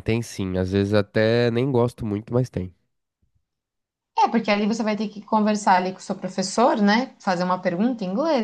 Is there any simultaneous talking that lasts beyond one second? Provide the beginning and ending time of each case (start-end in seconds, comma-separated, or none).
none